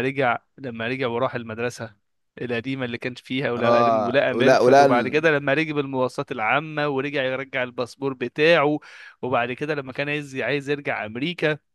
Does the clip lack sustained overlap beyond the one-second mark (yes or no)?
no